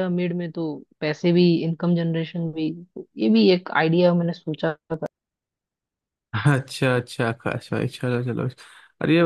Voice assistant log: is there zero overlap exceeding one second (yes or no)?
yes